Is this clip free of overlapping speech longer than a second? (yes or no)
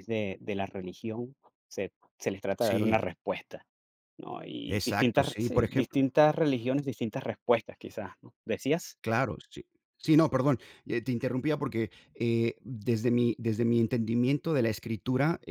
no